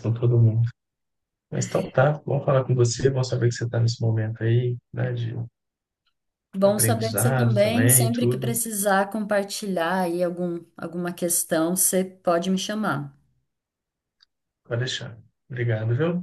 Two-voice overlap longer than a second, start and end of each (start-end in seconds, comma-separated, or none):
6.6-8.5